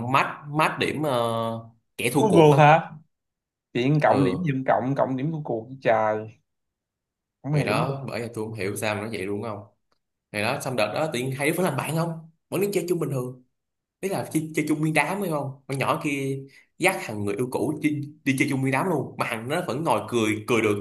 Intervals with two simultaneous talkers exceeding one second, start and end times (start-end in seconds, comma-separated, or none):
none